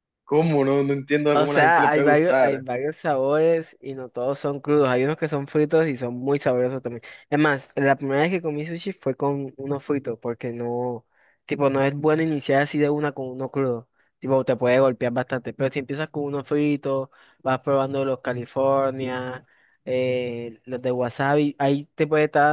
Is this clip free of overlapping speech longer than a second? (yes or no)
no